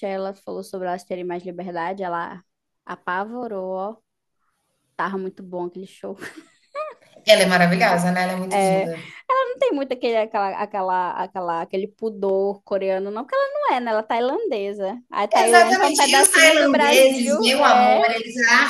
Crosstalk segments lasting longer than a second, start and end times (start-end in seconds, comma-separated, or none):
15.3-18.2